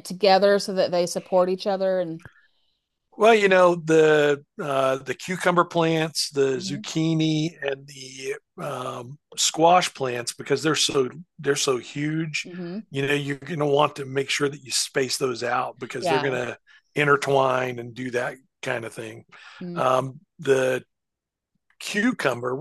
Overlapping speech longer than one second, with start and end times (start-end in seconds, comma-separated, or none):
none